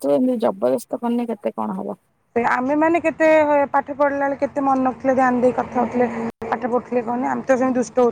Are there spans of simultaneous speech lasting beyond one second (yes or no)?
no